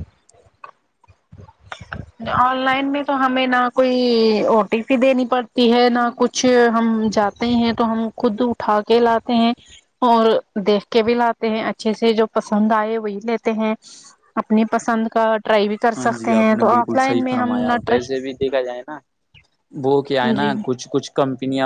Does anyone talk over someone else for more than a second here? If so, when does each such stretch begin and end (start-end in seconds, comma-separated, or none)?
16.0-18.2